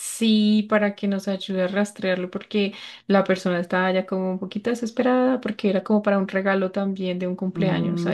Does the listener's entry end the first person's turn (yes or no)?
yes